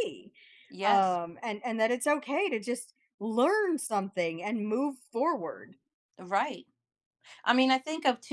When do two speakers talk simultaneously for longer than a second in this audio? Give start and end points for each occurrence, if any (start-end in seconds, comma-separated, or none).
none